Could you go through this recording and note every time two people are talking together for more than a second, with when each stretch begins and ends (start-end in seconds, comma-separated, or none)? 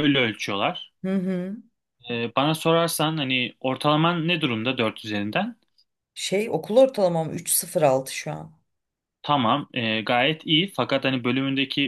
none